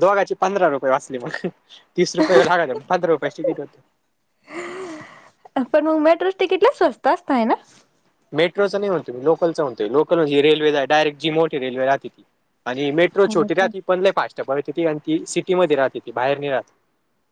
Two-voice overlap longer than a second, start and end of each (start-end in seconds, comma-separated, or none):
none